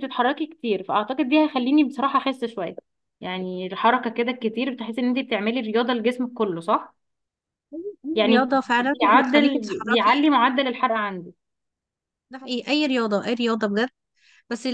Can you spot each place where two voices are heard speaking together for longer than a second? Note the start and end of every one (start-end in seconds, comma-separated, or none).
8.3-10.2